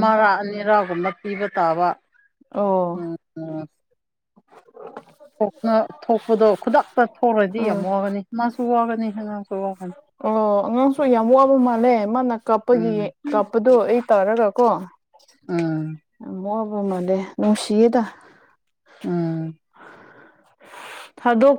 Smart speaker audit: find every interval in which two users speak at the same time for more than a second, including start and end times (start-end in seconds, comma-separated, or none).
none